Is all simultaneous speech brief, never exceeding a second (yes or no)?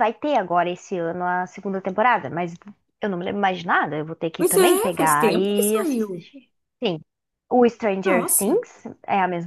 no